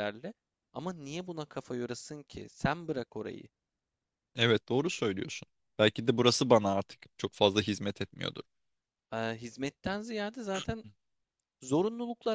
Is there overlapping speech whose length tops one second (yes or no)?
no